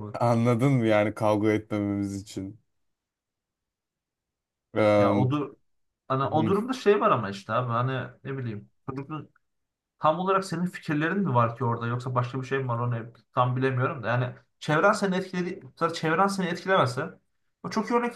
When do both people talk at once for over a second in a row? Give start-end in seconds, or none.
none